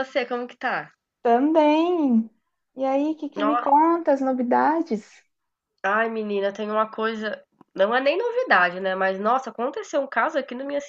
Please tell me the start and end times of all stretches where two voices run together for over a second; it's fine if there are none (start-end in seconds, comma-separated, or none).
none